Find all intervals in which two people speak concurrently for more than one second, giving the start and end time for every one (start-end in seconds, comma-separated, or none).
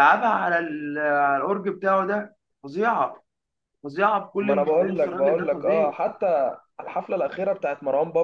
4.4-5.9